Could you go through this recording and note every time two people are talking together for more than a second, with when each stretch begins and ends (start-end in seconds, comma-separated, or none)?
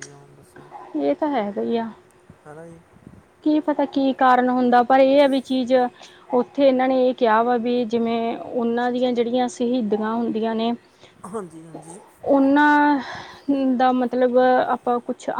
none